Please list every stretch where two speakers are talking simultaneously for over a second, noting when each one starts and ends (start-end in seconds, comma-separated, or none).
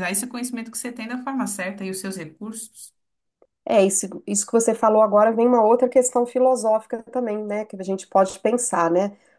none